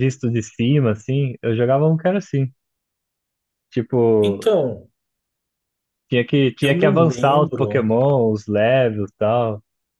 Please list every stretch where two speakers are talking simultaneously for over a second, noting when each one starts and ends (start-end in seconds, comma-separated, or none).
6.6-7.9